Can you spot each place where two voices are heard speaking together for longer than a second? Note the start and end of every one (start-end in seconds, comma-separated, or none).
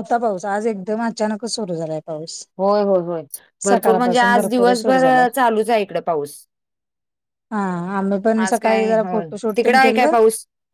3.7-5.2, 8.4-10.1